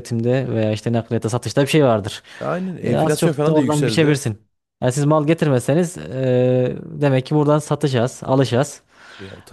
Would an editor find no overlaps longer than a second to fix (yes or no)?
no